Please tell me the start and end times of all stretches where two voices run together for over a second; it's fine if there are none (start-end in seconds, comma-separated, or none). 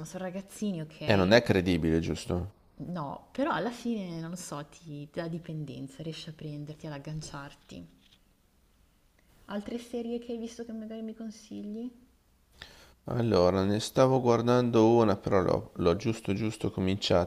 none